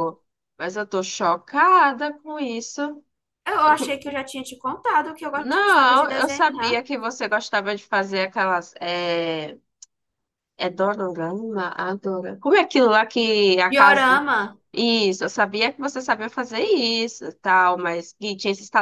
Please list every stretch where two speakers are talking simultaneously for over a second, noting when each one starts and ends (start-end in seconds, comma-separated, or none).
5.4-6.8